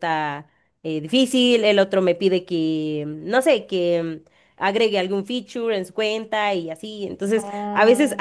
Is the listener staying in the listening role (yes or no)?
yes